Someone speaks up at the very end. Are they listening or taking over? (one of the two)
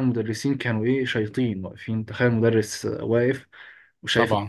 listening